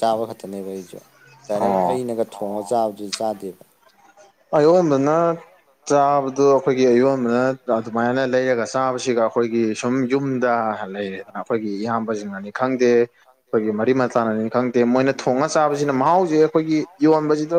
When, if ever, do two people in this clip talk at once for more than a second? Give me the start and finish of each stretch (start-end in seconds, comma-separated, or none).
none